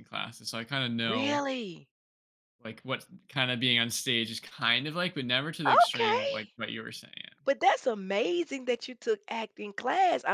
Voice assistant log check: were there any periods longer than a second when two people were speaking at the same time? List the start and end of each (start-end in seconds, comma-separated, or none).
none